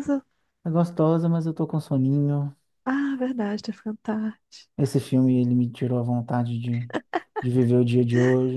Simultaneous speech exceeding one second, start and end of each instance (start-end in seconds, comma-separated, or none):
none